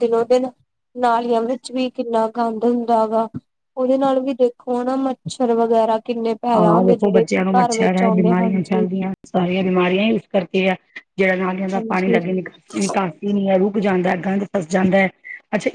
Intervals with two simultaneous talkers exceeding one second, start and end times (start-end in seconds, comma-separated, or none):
6.6-8.8